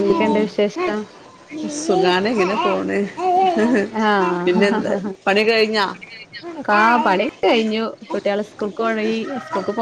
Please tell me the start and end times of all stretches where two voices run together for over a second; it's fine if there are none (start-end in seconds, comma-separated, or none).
none